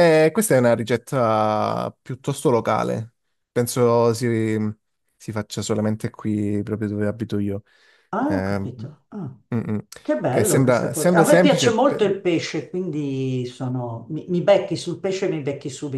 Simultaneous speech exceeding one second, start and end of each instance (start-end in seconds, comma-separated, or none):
10.3-12.1